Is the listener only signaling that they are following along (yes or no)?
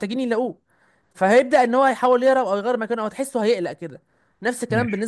yes